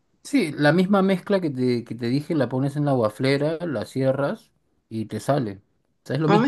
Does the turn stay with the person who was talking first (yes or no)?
no